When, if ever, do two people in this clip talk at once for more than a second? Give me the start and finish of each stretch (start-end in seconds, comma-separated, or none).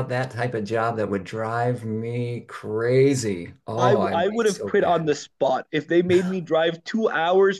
3.8-5.1